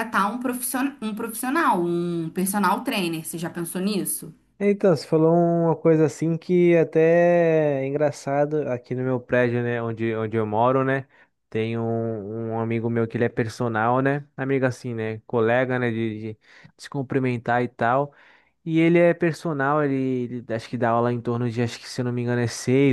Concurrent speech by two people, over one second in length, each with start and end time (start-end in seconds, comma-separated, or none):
none